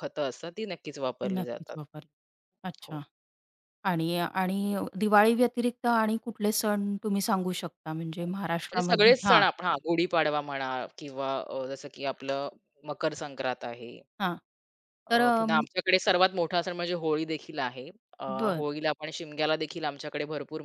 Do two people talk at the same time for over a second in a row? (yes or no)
yes